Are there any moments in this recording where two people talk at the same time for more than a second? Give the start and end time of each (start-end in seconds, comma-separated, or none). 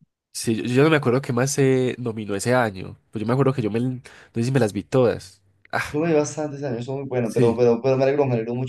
none